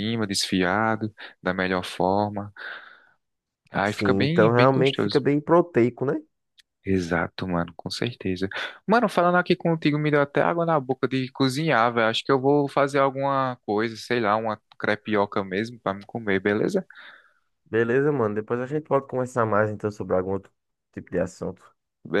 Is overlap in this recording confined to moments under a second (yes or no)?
no